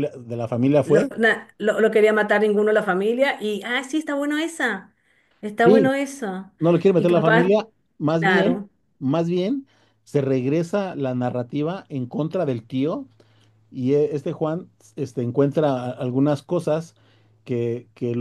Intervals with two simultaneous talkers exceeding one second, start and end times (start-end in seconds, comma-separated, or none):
none